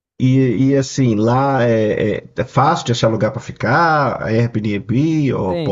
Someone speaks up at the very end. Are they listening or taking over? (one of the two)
taking over